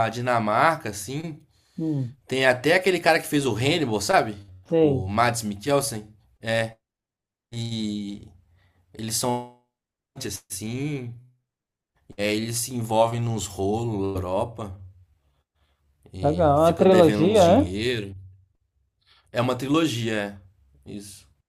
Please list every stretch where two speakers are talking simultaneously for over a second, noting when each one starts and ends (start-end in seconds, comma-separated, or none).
16.2-17.7